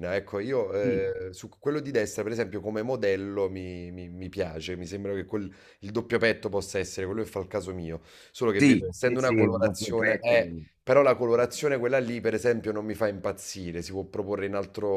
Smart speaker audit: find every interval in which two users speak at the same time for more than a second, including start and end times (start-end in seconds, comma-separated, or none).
8.6-10.4